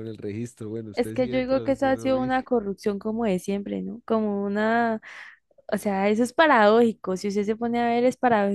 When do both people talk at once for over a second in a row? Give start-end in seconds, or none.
0.9-2.3